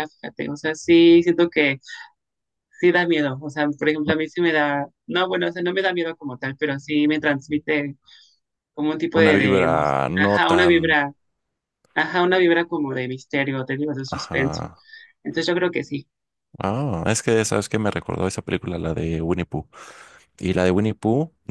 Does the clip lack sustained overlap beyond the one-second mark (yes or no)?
no